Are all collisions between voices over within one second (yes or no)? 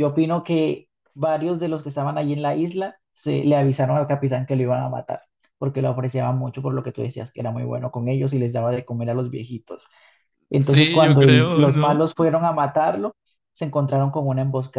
no